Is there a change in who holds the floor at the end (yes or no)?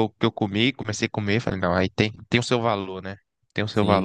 yes